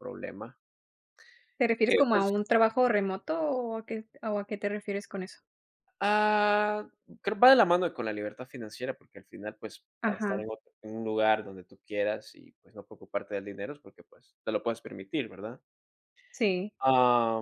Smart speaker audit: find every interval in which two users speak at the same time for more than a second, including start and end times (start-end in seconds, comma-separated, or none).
none